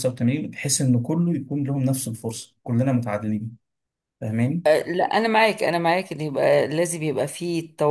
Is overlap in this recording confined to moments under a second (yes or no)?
yes